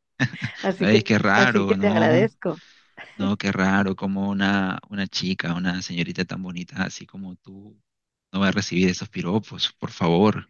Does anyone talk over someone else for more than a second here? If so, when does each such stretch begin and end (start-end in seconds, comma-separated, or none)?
0.8-2.3